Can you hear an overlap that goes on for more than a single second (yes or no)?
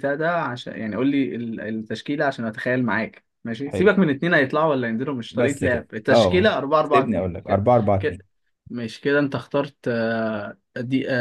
yes